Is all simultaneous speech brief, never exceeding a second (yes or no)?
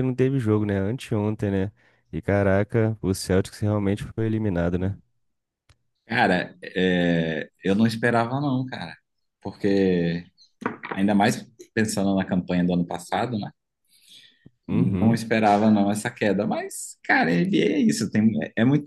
yes